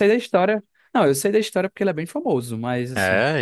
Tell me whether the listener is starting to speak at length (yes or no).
yes